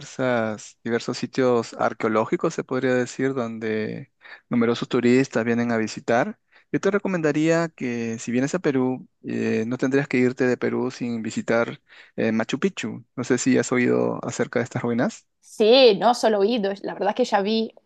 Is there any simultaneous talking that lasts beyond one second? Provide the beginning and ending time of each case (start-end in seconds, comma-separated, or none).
none